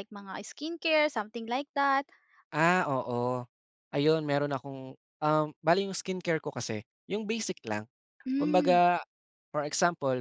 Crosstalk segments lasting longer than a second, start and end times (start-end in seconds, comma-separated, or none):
none